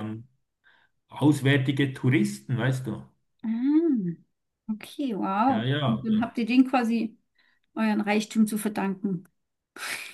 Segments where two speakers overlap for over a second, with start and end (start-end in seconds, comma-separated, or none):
none